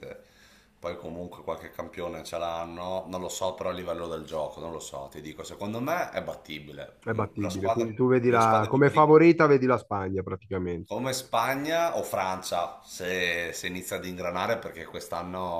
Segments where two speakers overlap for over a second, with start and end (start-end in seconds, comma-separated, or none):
7.0-9.2